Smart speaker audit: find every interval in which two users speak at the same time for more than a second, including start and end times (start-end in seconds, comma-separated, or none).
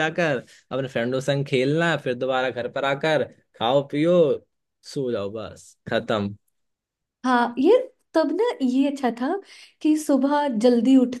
none